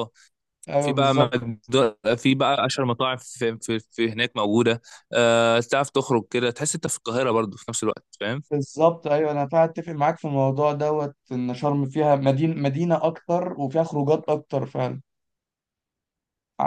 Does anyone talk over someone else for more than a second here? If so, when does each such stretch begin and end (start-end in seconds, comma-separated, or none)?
none